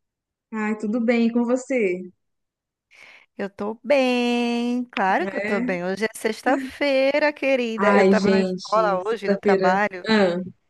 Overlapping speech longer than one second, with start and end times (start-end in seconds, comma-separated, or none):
7.8-10.1